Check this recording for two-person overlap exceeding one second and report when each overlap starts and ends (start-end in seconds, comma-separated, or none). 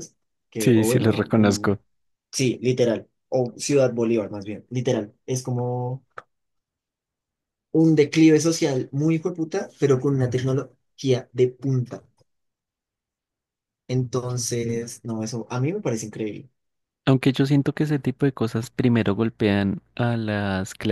0.6-1.8